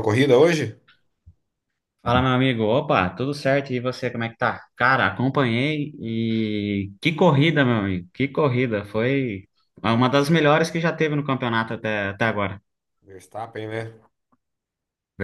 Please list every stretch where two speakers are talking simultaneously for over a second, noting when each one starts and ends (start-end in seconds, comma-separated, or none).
none